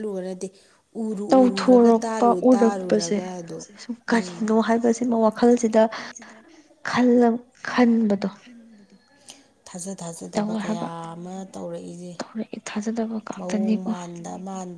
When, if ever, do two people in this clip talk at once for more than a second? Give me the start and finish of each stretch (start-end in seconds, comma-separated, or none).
1.3-3.2